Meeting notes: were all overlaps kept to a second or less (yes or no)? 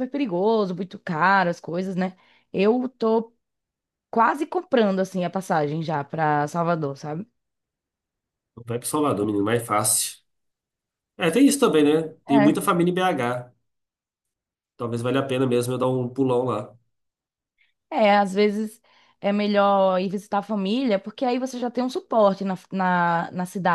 yes